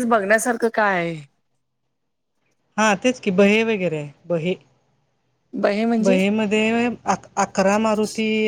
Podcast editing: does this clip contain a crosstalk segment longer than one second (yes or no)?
no